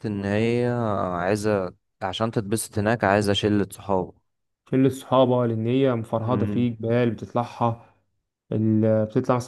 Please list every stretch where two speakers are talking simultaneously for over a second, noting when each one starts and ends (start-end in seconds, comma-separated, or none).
none